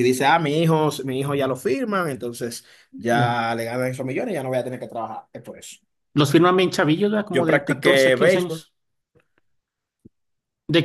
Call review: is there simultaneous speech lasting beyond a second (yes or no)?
yes